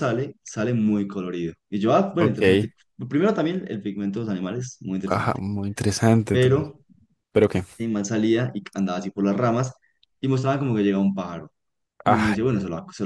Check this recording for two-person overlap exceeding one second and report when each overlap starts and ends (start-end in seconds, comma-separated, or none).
none